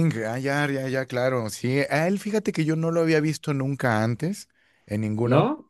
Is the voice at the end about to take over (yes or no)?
no